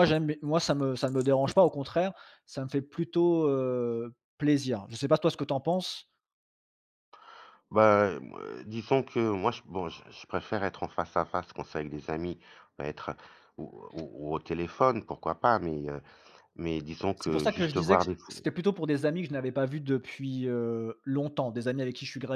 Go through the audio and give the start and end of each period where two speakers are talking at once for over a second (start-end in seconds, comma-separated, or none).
17.1-18.4